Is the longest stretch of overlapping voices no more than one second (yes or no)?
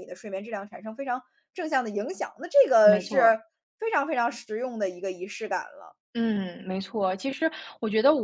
yes